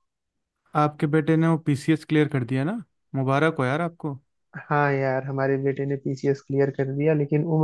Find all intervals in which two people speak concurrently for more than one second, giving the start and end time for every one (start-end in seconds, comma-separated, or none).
none